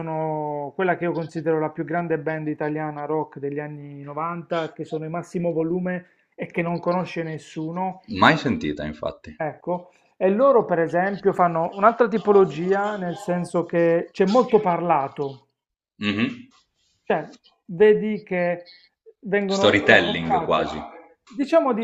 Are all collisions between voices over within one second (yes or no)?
no